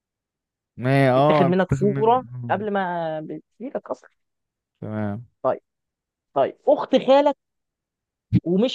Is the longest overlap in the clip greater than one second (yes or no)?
yes